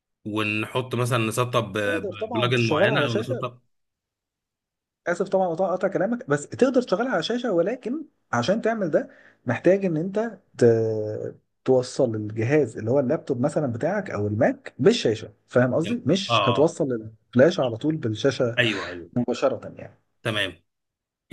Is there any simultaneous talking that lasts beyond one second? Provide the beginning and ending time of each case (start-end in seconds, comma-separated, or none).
1.9-3.5